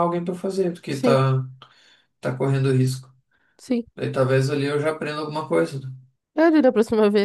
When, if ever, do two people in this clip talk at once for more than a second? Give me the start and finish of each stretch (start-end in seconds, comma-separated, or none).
none